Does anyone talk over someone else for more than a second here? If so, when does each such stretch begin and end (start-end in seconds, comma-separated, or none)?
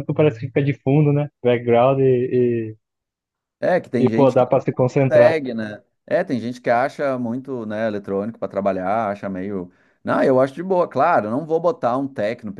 4.0-5.4